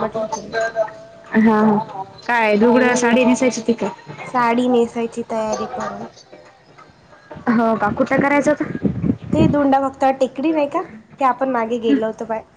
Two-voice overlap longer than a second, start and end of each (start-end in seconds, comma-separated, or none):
none